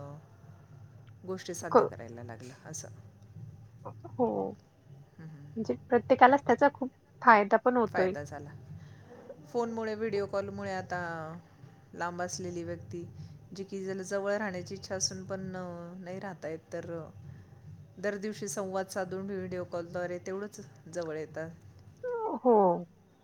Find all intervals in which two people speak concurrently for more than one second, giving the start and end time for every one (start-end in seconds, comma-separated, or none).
none